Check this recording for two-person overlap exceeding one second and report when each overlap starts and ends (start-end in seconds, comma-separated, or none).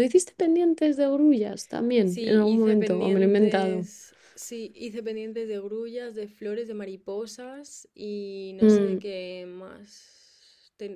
2.0-3.9